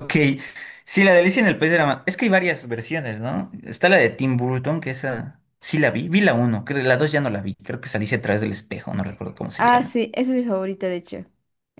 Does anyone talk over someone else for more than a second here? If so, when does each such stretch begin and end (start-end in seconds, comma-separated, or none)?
none